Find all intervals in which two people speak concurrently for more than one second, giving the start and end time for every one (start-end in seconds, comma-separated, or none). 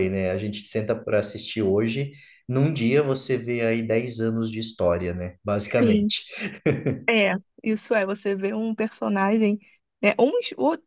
none